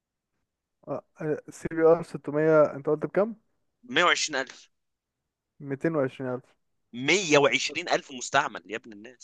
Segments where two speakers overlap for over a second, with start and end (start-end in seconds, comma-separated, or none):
none